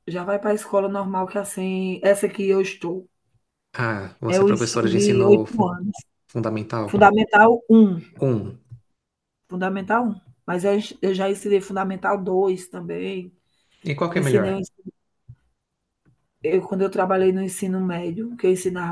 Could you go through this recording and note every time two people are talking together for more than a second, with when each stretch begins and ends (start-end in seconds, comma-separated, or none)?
4.3-5.7